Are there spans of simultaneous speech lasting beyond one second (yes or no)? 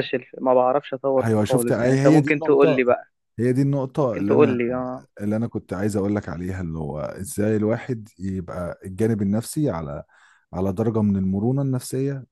yes